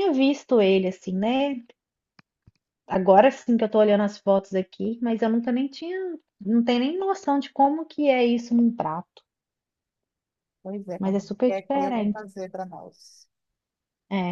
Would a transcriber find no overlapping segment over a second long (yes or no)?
no